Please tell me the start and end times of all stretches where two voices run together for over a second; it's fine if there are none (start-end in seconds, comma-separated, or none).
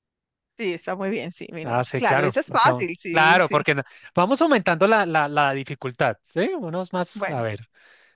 1.6-3.6